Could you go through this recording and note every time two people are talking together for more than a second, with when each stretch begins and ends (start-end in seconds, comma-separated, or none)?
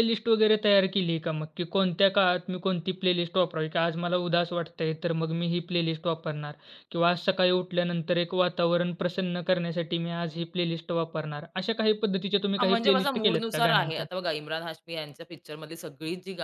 12.6-14.1